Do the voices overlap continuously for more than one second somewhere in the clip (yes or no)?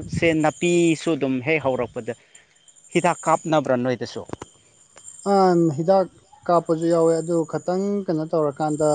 no